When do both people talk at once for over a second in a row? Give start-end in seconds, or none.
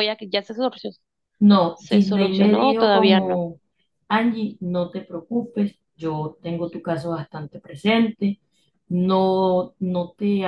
1.7-3.5